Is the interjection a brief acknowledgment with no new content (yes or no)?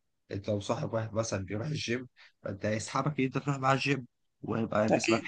yes